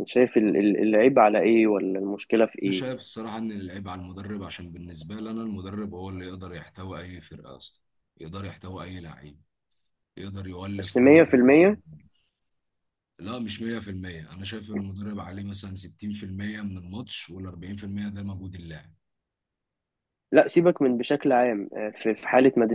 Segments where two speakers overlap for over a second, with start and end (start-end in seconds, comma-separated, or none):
none